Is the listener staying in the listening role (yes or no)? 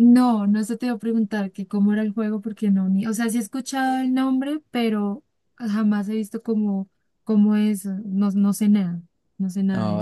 no